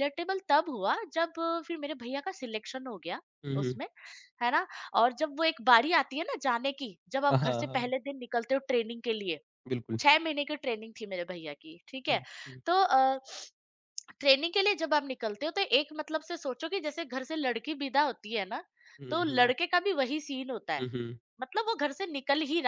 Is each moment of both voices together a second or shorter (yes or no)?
yes